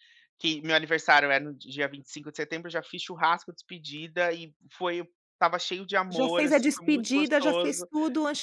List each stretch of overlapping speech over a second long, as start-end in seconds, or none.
6.1-7.9